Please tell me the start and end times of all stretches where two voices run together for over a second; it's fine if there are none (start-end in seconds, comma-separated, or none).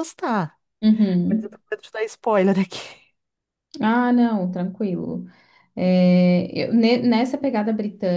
none